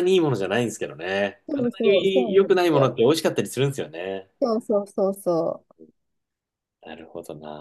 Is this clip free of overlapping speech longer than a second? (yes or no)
no